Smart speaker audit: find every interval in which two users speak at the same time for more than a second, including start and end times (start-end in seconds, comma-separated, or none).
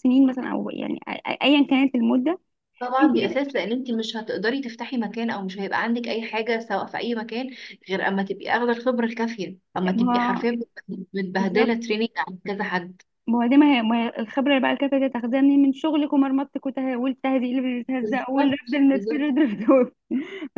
18.0-19.2